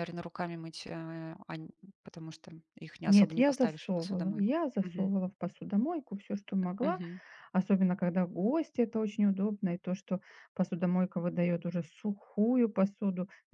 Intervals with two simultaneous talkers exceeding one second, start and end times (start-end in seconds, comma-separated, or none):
3.1-5.1